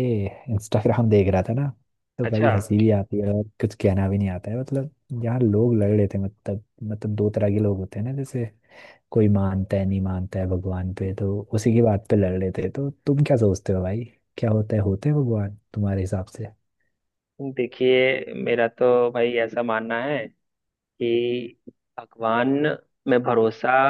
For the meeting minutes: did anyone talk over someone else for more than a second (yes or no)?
no